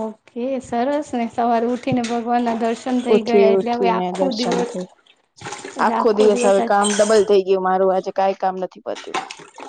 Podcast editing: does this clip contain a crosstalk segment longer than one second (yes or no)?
yes